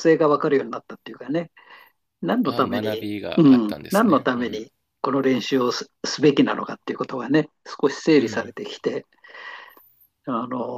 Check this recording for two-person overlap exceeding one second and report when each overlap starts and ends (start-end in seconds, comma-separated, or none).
2.4-4.6